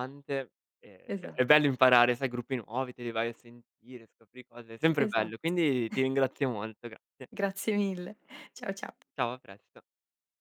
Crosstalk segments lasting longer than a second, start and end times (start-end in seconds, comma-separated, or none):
none